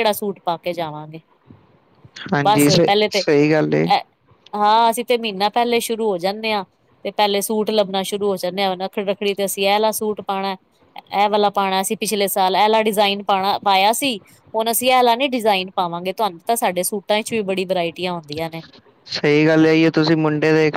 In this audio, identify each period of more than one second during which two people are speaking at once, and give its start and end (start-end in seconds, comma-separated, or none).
none